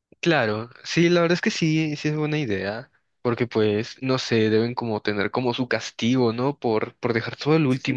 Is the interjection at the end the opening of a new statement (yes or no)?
yes